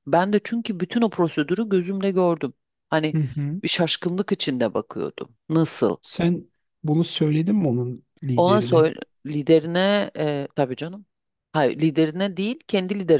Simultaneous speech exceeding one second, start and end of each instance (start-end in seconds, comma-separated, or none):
none